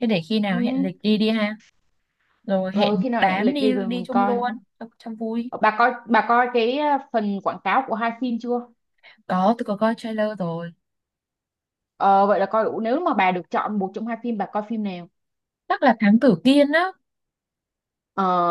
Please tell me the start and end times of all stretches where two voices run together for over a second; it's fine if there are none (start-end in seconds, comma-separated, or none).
2.7-4.4